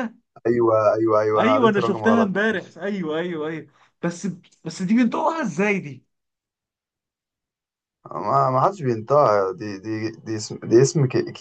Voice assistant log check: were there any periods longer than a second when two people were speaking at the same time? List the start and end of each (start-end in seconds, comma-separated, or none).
1.4-2.7